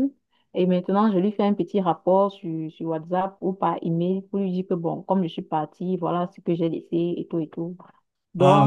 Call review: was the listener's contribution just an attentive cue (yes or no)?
yes